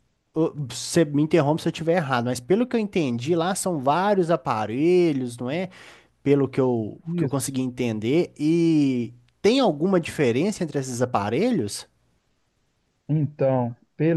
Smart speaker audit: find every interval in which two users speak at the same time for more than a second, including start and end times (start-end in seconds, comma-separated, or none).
none